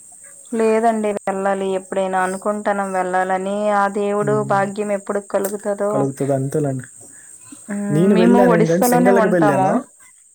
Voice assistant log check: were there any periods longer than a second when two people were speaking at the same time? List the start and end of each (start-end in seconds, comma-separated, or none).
7.9-9.7